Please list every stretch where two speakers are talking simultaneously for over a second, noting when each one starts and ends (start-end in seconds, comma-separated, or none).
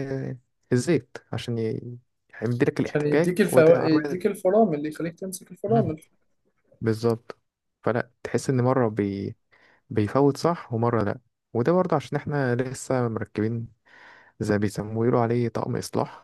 2.8-4.2